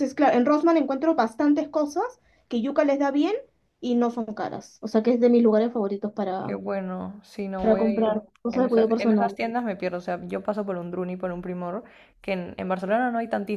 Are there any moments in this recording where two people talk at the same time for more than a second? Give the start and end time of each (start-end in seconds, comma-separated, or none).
7.6-9.4